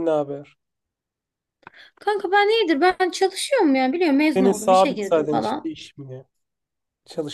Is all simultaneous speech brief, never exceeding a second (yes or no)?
no